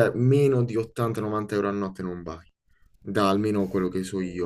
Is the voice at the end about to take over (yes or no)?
yes